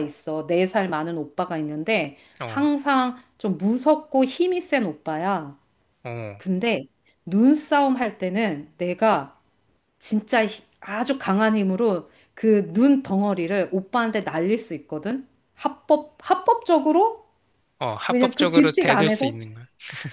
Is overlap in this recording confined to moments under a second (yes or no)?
no